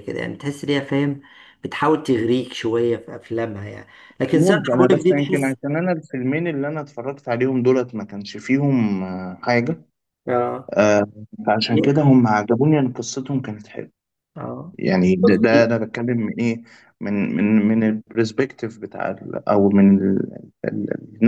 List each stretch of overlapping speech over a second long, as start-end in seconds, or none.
4.3-5.5